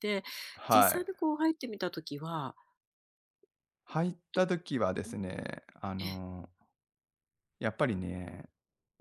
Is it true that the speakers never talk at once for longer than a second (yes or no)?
yes